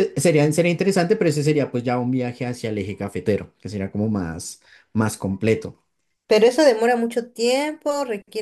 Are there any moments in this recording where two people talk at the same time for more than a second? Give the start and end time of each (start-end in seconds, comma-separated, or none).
none